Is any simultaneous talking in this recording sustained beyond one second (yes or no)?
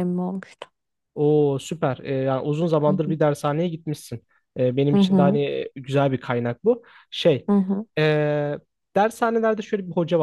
no